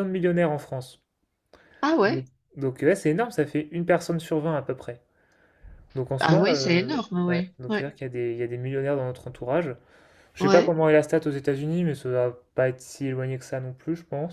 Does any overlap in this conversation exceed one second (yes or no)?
yes